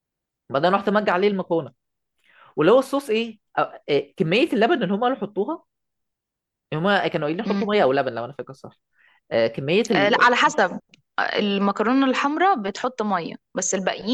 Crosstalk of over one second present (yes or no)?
no